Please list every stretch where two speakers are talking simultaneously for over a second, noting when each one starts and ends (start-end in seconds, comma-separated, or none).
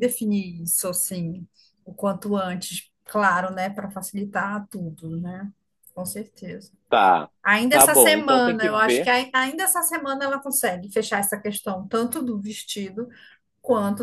7.7-9.1